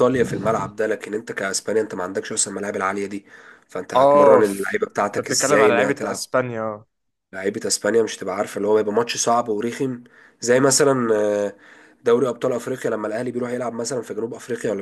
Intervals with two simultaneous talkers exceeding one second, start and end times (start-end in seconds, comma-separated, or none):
3.9-6.3